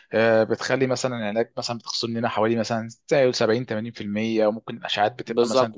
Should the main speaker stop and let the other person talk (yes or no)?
yes